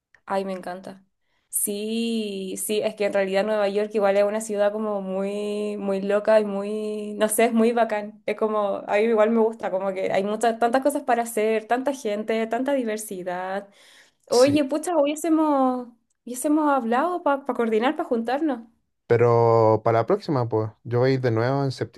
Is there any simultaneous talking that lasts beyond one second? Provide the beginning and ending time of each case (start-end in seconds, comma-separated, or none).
none